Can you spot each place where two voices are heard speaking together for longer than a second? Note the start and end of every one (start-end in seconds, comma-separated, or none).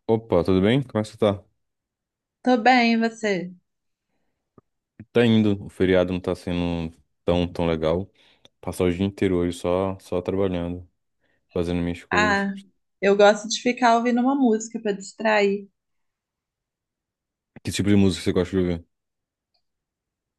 none